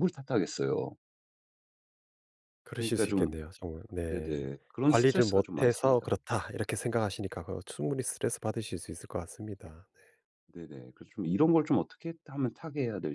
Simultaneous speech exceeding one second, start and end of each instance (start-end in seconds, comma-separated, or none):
4.1-6.1